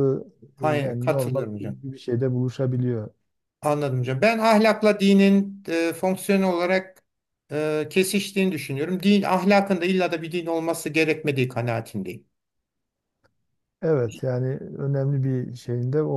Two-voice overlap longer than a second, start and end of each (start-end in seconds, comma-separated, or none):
0.6-1.8